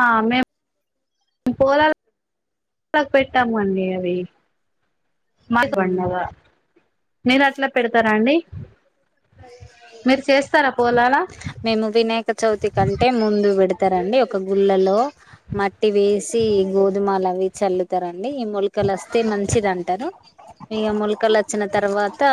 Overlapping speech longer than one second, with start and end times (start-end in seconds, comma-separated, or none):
none